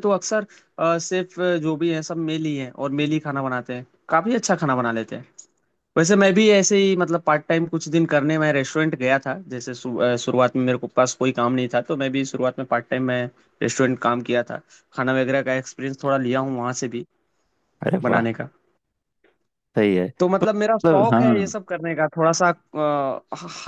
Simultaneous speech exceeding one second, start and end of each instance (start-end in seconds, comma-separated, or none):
20.2-21.5